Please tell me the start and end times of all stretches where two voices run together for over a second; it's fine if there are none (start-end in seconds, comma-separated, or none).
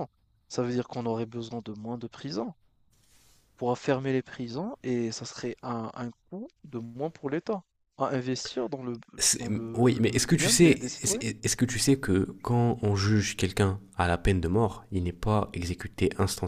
9.4-11.2